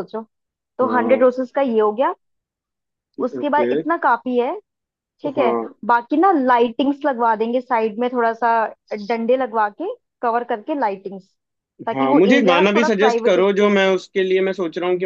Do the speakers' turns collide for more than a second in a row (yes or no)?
yes